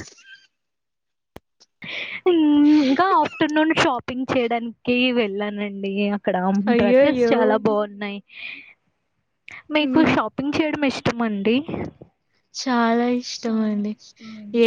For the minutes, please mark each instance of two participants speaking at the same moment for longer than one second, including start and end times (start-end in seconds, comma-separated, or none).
none